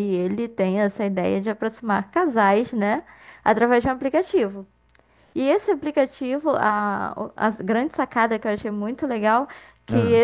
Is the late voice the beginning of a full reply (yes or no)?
no